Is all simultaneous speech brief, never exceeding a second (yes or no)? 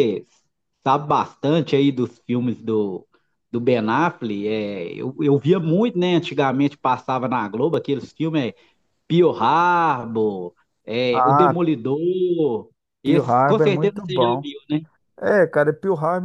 no